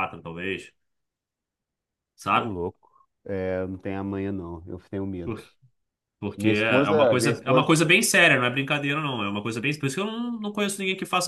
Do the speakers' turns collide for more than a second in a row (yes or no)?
yes